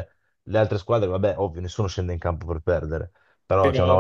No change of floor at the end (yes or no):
yes